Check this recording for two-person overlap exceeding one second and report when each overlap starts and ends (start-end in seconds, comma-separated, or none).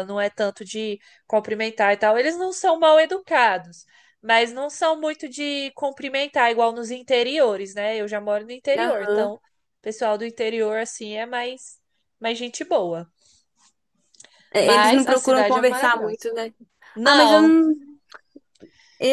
14.6-16.3